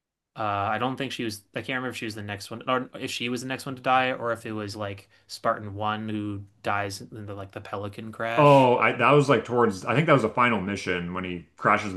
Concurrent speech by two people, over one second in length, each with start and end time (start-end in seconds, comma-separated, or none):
none